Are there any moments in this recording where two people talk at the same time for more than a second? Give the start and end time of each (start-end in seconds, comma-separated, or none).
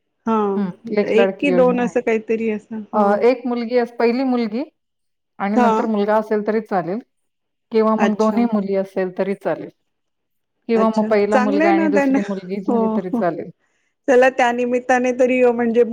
1.1-3.0, 10.8-13.2